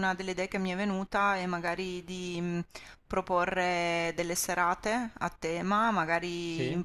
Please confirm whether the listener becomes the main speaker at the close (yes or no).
no